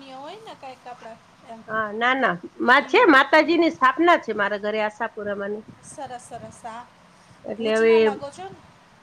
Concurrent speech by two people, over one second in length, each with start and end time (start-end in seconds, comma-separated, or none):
none